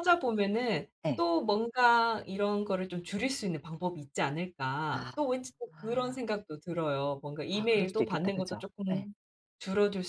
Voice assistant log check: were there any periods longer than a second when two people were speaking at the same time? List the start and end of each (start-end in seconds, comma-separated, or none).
7.5-9.1